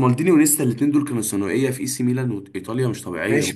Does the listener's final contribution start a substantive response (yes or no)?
yes